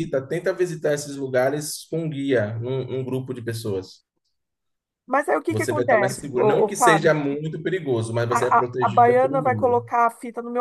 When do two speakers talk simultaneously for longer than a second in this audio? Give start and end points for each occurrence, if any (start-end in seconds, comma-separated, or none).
5.5-7.2, 8.3-9.8